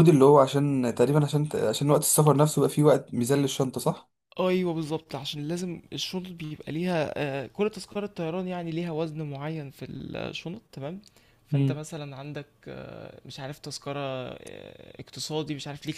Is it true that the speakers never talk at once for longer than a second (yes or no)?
yes